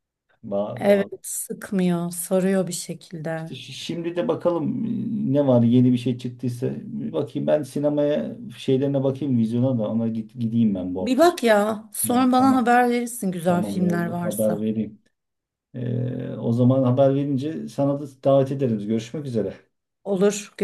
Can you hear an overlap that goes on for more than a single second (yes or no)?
yes